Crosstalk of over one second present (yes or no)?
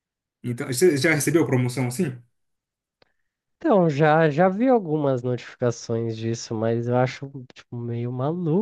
no